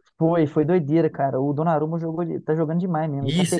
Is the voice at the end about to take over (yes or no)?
yes